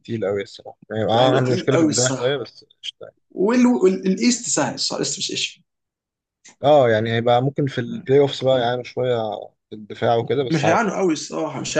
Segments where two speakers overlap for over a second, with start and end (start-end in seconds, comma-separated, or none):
1.2-2.4